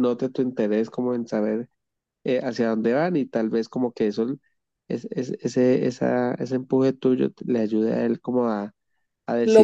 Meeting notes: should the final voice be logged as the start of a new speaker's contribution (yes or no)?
no